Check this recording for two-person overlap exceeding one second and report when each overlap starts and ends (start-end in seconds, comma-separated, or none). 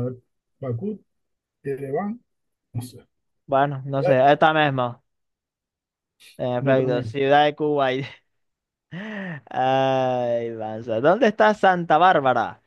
none